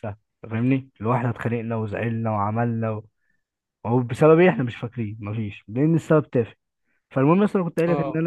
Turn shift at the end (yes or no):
no